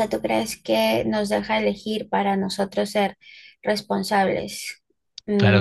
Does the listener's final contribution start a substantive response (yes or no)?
yes